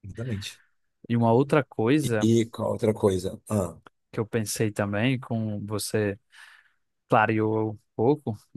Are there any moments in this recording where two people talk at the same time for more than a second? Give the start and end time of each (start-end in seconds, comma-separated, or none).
none